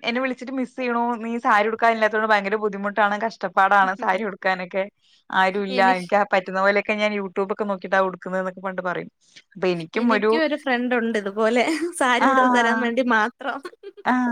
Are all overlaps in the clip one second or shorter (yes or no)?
yes